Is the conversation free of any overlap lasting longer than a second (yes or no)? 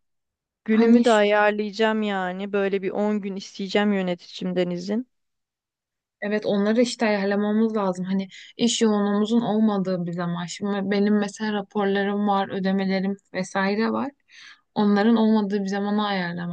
yes